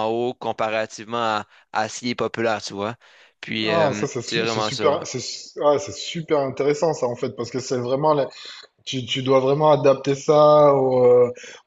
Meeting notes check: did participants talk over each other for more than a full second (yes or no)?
yes